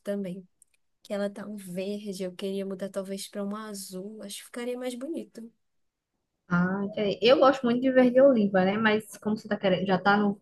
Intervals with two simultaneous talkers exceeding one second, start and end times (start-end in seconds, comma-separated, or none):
none